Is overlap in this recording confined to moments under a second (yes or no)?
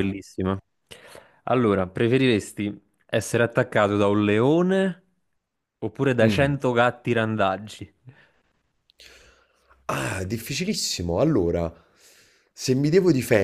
yes